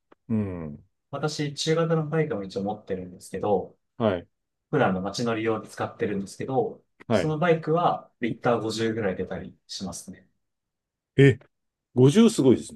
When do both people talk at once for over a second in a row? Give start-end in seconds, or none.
none